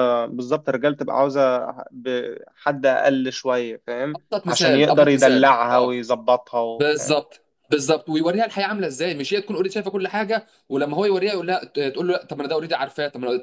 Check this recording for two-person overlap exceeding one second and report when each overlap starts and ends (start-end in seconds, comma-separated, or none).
4.1-6.0